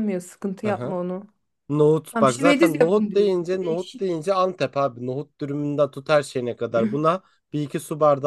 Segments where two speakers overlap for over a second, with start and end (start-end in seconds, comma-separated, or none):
2.1-4.2